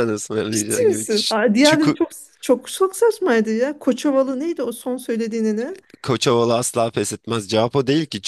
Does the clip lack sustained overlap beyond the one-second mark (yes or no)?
no